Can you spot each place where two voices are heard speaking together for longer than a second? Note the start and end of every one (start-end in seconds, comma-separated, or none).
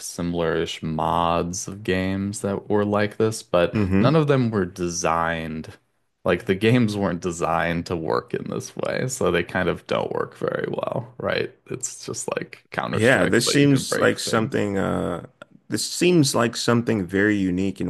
12.9-14.6